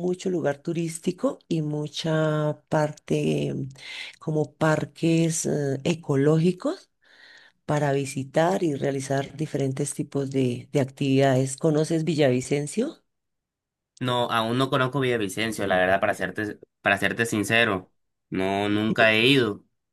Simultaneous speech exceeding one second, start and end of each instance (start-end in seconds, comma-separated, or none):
none